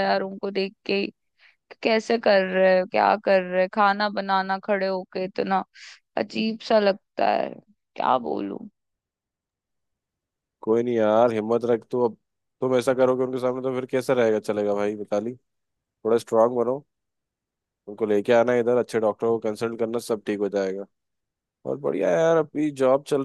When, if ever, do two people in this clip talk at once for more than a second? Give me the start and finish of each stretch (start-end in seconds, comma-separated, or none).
none